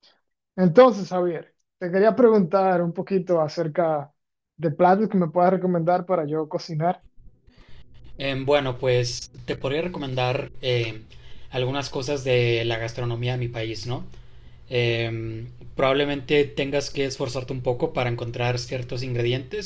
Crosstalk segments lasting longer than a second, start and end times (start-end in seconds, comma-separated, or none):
none